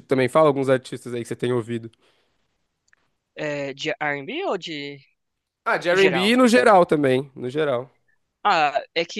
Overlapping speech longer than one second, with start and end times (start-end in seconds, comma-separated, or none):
none